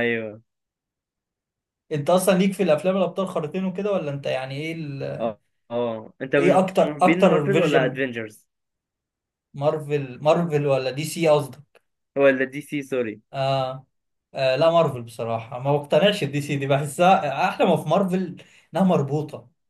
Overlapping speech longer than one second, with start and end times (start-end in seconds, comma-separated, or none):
6.4-8.0